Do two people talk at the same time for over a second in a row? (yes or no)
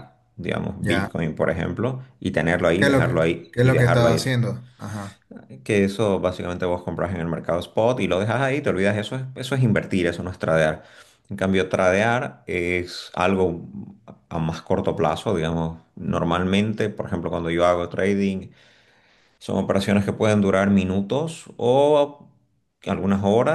yes